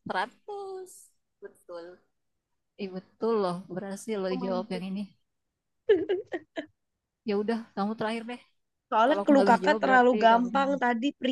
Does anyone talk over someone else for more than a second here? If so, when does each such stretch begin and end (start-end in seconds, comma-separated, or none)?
9.0-10.7